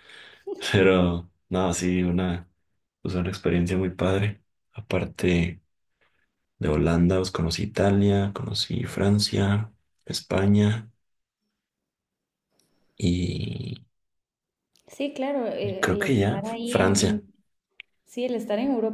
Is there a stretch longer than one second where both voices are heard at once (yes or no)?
yes